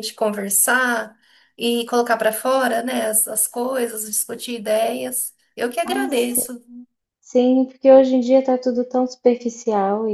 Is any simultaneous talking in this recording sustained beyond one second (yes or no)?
no